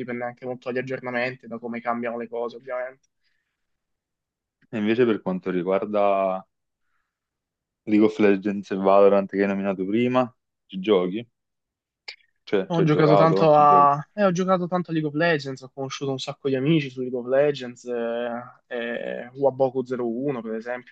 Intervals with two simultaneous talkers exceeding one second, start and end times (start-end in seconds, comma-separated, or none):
12.7-13.9